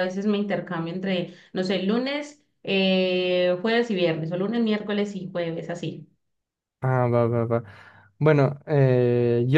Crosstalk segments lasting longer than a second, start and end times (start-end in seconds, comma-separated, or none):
none